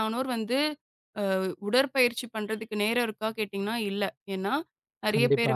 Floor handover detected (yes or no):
no